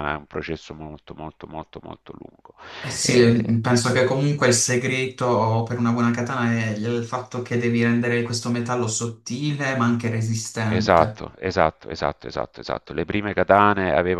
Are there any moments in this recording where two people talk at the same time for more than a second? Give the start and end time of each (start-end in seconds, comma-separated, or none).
none